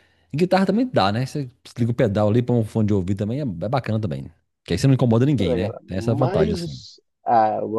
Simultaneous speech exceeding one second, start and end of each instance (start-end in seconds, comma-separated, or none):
5.4-6.8